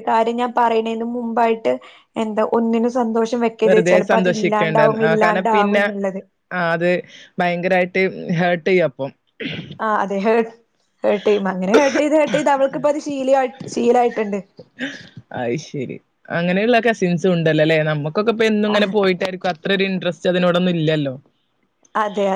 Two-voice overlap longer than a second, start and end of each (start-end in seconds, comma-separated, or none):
3.6-5.8